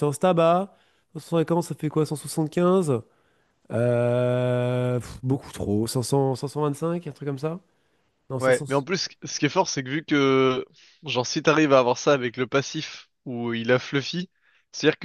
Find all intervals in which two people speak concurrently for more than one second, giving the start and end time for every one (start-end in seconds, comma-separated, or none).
none